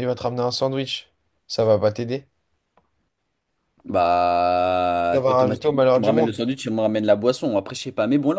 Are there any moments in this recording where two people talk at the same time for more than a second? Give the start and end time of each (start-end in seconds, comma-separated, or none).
5.1-6.3